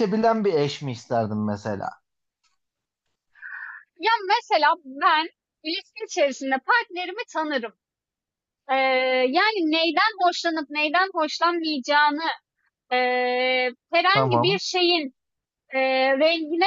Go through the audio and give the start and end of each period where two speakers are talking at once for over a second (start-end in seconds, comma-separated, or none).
none